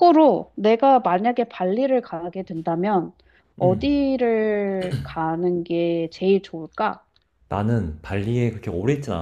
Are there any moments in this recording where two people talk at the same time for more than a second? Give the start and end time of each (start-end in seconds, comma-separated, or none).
none